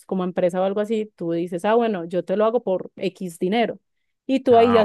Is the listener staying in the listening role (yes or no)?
yes